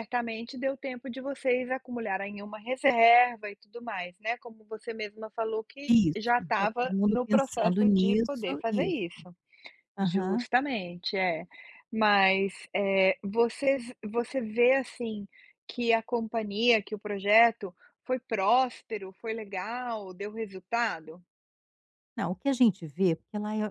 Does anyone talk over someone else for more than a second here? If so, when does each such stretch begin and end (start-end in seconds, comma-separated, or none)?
5.9-9.0